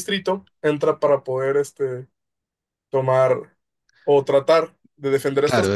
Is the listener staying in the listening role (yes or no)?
no